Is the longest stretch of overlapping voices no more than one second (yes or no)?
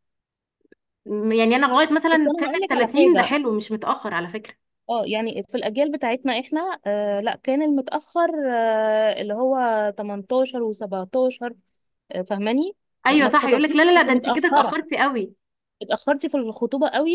no